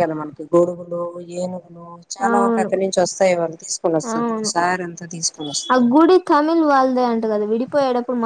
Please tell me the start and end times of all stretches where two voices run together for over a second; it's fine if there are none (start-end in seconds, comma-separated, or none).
none